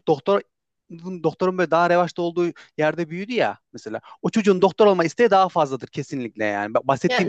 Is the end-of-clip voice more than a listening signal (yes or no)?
yes